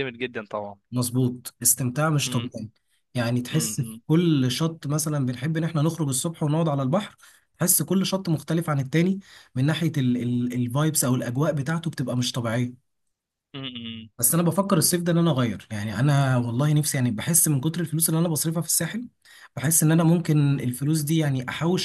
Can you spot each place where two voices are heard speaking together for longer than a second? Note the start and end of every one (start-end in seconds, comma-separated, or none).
none